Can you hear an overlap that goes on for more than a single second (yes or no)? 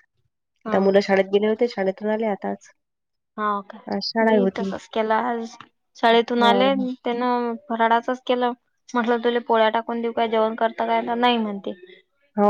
no